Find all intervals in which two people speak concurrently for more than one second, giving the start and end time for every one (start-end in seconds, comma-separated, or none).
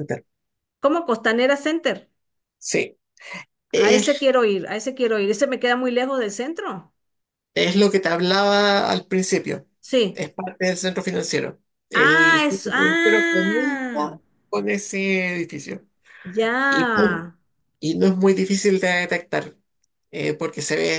11.9-14.2